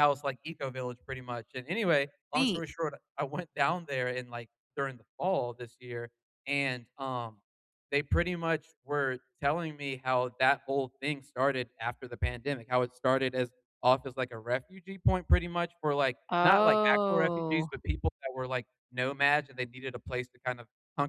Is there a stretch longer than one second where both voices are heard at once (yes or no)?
yes